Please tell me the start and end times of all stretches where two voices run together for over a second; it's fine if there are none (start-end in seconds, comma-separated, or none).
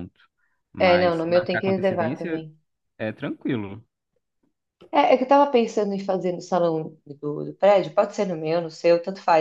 0.8-2.5